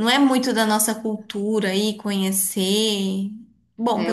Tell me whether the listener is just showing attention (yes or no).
yes